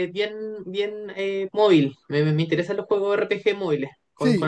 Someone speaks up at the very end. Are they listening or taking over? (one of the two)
taking over